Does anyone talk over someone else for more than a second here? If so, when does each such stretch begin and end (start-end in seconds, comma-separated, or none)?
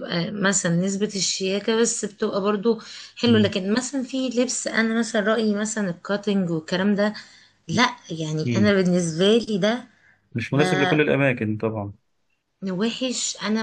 none